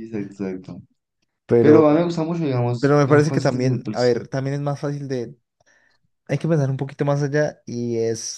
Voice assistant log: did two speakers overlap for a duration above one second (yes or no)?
yes